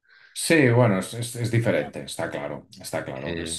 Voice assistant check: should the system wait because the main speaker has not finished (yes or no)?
yes